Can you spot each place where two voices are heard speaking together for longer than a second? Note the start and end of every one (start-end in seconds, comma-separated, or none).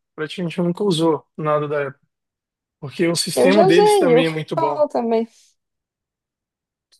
3.4-4.8